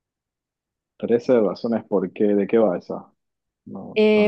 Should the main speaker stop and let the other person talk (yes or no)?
yes